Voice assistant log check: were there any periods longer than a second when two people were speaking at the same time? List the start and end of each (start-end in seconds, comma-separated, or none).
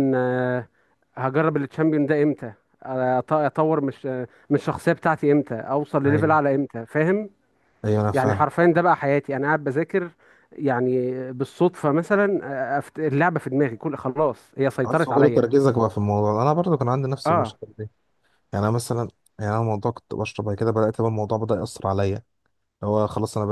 none